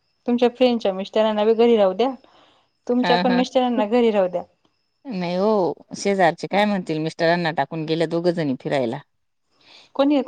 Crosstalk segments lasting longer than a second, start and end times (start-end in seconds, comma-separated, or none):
none